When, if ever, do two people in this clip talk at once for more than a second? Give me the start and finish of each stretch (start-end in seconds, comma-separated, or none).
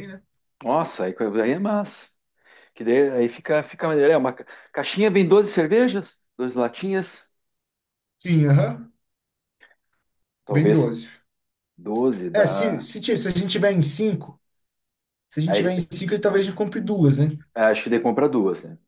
none